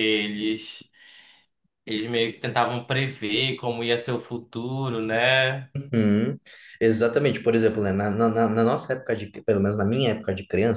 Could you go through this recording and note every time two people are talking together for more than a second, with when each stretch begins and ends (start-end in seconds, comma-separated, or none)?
none